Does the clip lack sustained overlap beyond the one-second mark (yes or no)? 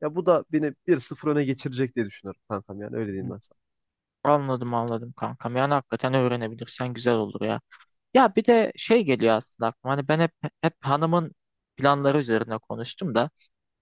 yes